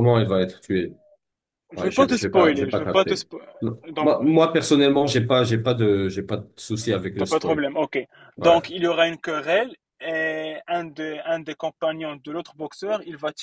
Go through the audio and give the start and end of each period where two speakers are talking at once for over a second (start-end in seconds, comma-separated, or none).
1.8-3.2